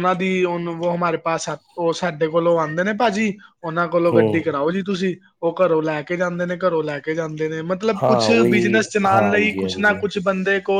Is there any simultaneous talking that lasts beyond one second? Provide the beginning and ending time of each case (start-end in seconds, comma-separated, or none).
8.0-10.0